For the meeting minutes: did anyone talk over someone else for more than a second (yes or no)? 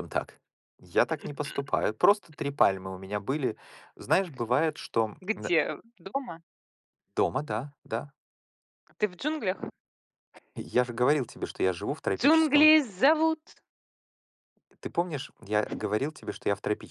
no